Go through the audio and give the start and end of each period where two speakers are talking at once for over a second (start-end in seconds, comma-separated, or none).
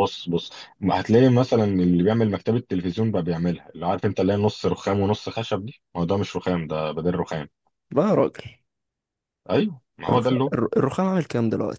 none